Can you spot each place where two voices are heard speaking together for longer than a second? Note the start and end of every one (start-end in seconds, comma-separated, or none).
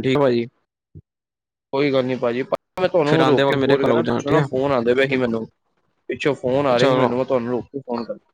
3.1-4.5